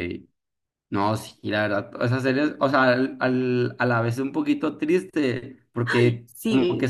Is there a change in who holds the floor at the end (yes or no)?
no